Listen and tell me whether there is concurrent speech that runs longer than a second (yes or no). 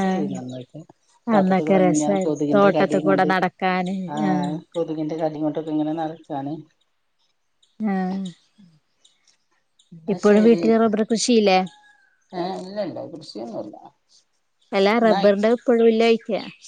yes